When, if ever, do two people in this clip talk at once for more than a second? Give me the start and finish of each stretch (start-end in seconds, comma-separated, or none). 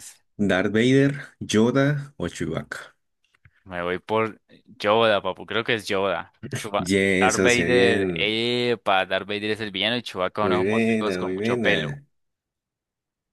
6.8-8.3, 10.4-12.0